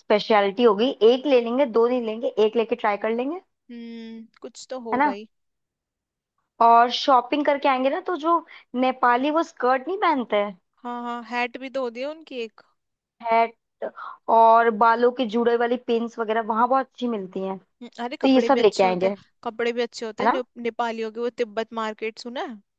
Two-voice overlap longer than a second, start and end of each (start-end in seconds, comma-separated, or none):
18.0-19.5